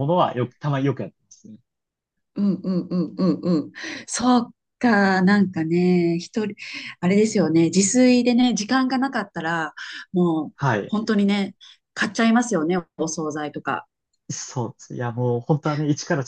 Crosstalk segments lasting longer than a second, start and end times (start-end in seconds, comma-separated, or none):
none